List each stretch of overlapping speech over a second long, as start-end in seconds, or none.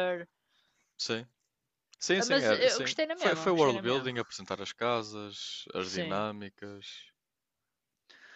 2.2-4.1